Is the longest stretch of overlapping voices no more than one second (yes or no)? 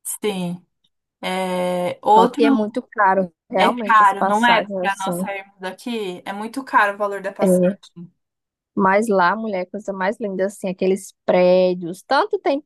no